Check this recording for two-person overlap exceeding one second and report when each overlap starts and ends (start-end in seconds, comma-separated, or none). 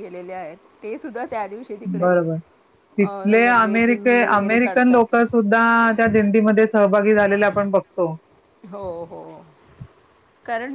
3.0-5.2